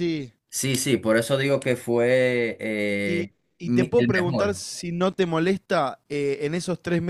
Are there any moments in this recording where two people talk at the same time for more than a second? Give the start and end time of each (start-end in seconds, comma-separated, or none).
3.0-4.6